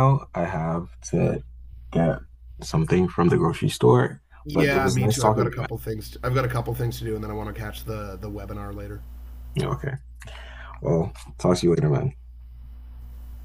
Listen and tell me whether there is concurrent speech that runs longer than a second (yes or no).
yes